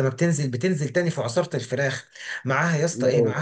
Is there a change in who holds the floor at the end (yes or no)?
no